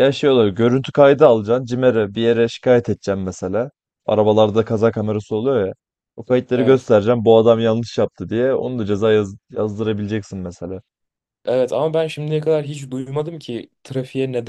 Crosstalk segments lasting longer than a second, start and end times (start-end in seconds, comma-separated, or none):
none